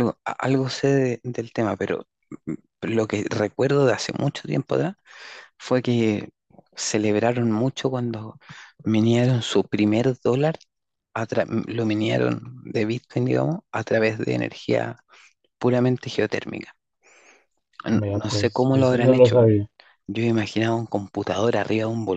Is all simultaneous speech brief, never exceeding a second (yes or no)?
no